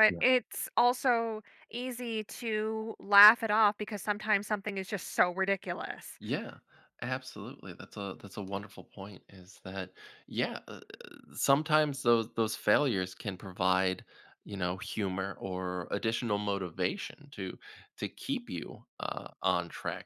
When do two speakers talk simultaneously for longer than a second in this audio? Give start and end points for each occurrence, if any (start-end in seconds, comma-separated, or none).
none